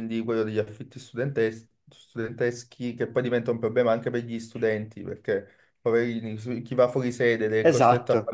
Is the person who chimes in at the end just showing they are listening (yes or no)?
yes